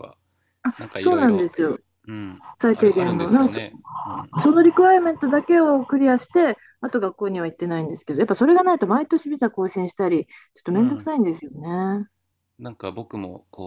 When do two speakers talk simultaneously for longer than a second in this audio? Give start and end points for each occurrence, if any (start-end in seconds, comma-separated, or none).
2.6-3.8